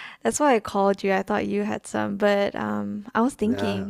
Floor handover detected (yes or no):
no